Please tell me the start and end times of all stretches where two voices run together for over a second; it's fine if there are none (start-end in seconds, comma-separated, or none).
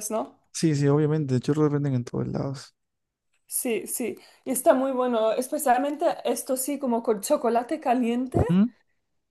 none